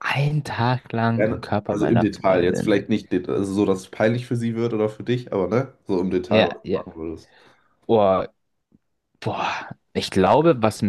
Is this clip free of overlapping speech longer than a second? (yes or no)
no